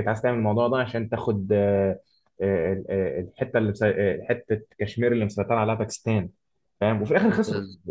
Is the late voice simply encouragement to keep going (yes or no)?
yes